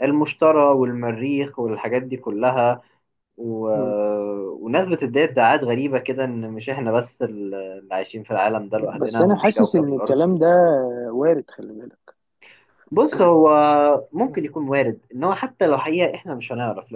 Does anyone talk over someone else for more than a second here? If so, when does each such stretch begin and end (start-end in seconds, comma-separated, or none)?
9.0-10.2